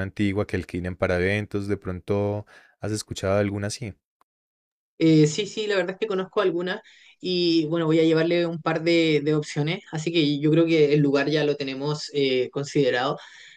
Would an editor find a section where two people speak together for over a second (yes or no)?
no